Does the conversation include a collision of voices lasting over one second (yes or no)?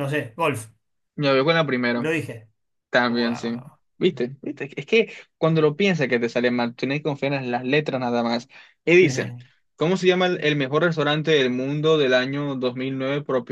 no